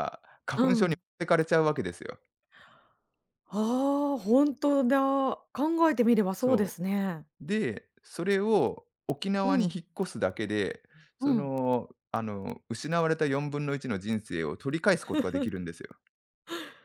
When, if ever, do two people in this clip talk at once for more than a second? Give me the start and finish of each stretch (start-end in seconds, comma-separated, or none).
none